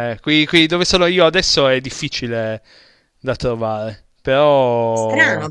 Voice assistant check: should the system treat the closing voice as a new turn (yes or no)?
yes